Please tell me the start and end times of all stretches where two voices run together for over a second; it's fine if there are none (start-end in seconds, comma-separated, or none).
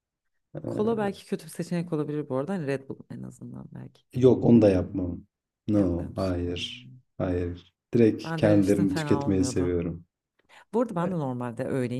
5.7-7.0, 8.2-9.8